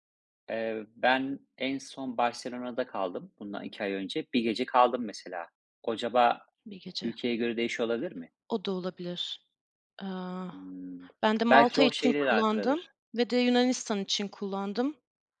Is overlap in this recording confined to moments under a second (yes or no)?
no